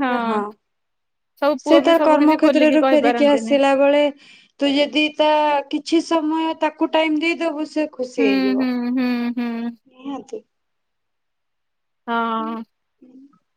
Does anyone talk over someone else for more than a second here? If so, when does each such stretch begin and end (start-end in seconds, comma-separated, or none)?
1.6-3.5